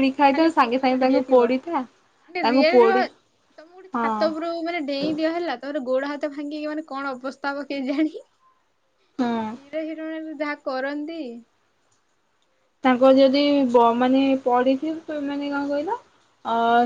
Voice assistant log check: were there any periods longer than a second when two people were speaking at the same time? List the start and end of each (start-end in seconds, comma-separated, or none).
none